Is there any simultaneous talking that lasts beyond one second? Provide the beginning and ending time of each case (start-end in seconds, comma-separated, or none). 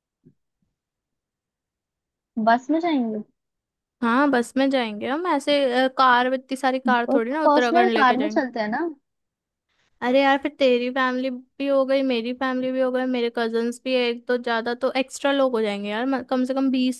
7.1-8.4